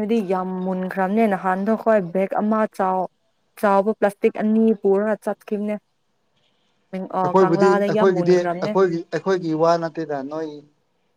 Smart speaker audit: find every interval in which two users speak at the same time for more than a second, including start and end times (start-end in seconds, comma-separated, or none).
7.2-8.8